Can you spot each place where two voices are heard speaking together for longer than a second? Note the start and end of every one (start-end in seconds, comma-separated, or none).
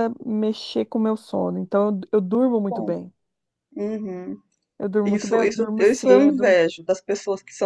5.0-6.5